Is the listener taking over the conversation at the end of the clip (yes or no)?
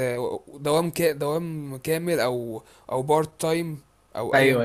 yes